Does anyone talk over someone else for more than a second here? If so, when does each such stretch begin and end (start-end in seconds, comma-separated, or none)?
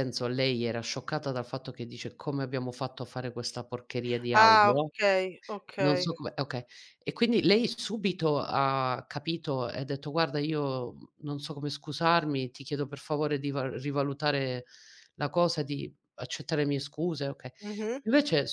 none